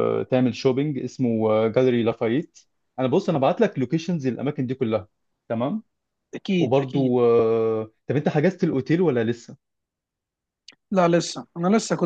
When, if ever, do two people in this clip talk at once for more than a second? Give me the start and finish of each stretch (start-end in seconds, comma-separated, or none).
none